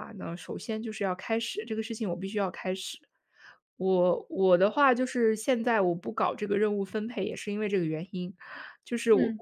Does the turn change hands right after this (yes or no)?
no